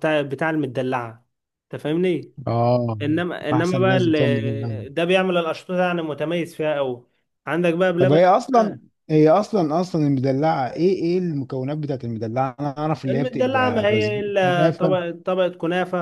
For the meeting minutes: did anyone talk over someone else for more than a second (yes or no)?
yes